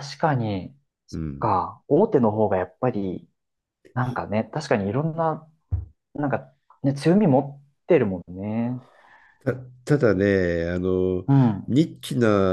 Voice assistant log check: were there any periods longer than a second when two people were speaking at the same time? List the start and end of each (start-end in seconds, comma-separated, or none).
none